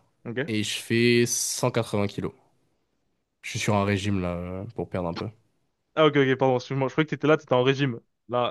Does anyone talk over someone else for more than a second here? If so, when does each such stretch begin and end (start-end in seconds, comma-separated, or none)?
none